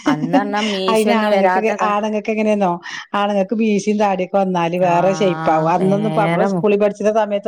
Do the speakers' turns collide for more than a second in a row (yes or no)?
yes